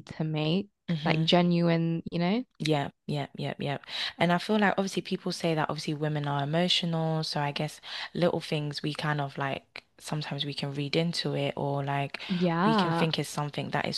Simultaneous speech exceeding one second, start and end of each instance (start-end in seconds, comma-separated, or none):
none